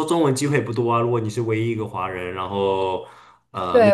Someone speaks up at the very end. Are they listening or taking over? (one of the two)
taking over